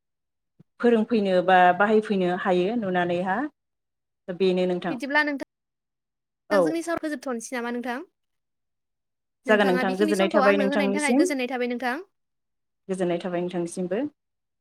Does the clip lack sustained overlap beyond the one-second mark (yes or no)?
no